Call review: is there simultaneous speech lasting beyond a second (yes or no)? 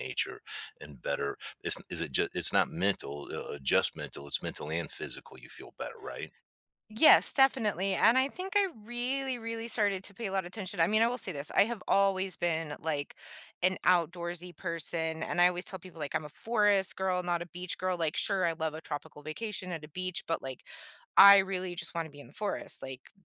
no